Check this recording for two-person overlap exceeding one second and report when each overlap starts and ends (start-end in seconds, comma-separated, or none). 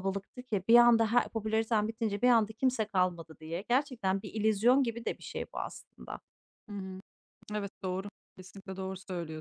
none